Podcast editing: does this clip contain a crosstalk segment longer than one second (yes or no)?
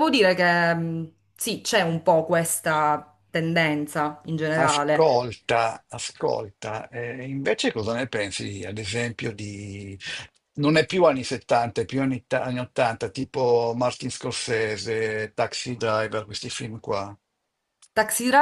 no